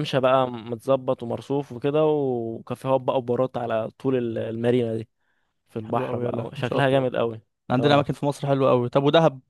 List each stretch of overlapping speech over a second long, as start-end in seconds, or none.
5.8-7.1